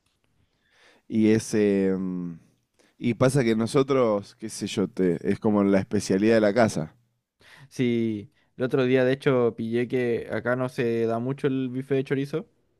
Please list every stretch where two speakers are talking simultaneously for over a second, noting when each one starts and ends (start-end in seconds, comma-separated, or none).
none